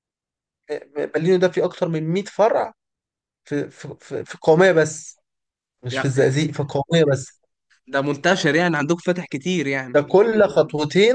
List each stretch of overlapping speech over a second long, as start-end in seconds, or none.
none